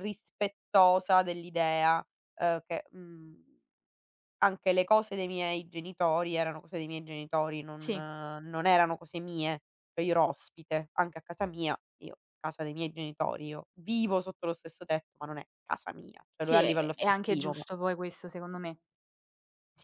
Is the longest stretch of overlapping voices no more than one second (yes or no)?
no